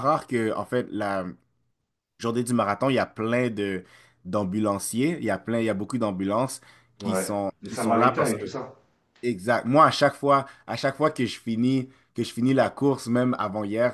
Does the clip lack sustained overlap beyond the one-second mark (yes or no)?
no